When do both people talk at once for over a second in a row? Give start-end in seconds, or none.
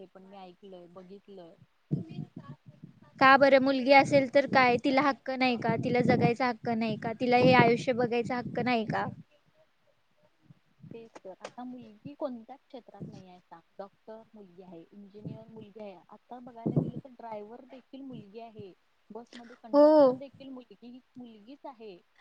none